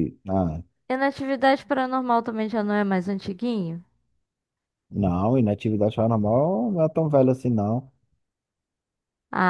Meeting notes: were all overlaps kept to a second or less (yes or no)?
yes